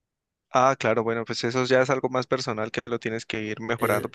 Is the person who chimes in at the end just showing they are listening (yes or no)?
no